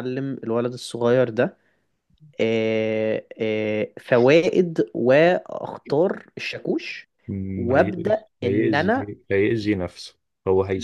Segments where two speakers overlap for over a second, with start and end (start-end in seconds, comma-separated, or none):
7.6-9.1